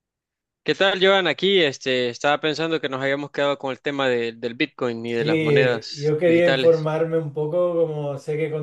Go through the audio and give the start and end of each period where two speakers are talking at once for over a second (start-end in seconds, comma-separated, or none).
5.2-6.9